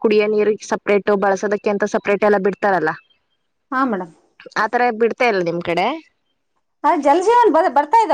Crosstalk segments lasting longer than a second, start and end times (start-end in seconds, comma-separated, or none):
none